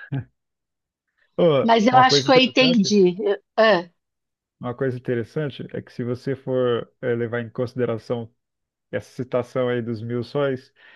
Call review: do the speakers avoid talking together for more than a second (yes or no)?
no